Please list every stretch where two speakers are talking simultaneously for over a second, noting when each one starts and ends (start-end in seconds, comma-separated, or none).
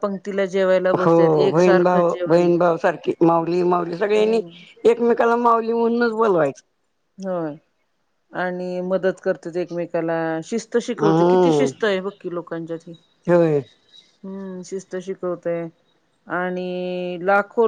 1.1-2.5